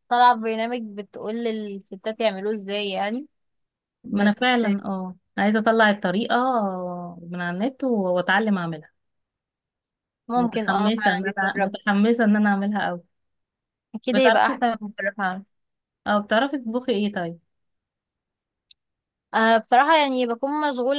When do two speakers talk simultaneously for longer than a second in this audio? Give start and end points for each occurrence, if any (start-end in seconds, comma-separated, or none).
10.4-11.7